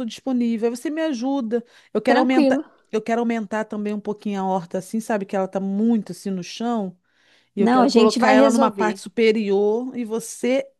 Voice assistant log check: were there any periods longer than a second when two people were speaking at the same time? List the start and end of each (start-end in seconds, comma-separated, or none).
7.6-9.0